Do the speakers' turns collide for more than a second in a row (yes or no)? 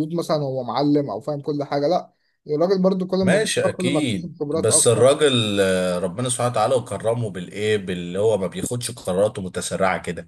yes